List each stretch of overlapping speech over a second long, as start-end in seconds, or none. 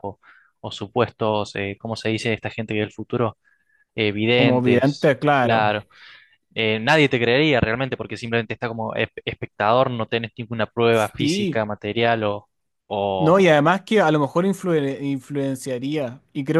4.4-5.8